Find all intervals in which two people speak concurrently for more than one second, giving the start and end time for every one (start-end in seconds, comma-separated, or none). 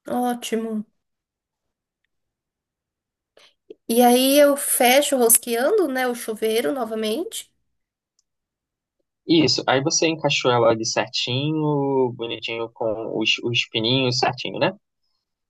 none